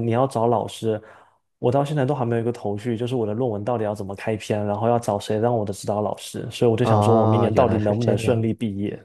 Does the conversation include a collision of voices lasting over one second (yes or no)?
yes